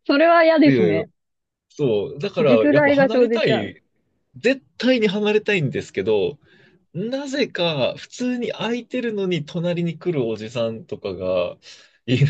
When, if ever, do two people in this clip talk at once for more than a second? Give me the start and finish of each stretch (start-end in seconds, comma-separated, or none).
2.4-3.8